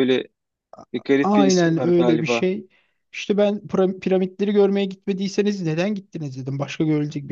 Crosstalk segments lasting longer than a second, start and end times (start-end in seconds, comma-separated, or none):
1.2-2.5